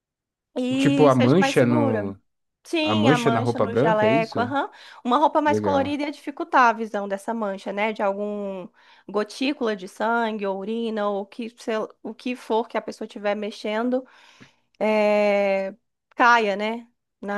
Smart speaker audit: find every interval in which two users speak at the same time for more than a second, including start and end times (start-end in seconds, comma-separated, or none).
0.8-2.1, 2.8-4.4